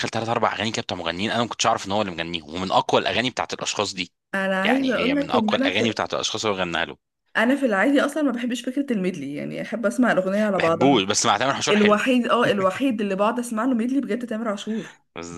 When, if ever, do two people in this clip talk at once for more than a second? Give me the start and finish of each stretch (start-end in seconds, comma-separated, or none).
4.7-6.0